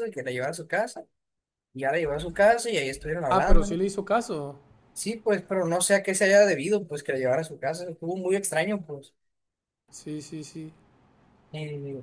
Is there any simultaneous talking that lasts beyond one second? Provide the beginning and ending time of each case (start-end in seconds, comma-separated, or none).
none